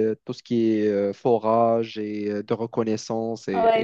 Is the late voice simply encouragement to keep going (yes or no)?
no